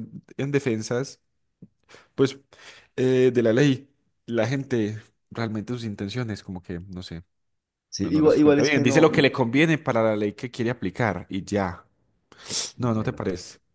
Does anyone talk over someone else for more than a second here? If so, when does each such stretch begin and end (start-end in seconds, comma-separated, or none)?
8.0-9.3